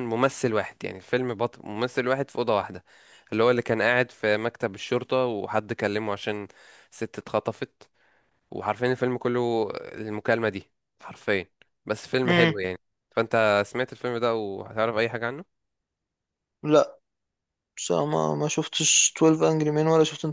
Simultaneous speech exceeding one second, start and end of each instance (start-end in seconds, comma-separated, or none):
none